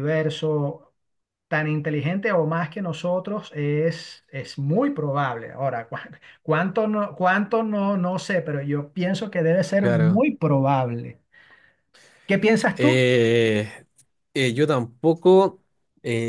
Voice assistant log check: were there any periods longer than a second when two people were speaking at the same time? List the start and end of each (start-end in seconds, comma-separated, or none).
none